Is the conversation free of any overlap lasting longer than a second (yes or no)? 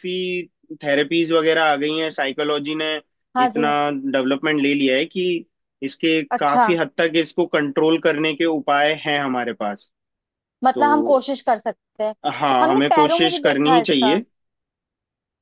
no